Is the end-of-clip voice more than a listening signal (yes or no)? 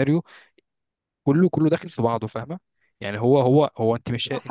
yes